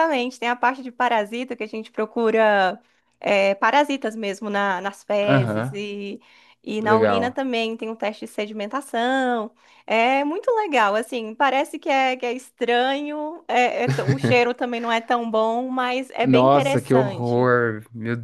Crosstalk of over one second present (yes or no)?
yes